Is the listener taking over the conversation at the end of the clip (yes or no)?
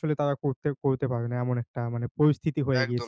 yes